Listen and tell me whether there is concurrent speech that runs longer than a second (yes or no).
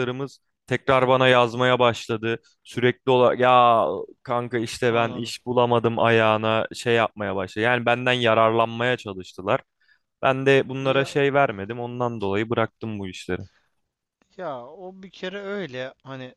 no